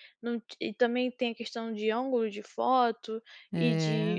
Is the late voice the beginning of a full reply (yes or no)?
no